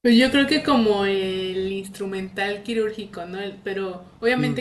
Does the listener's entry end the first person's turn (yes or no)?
no